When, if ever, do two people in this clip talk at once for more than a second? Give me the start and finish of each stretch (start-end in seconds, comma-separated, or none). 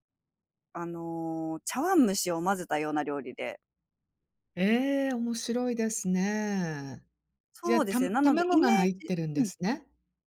7.6-9.5